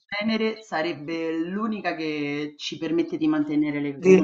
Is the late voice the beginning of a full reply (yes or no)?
yes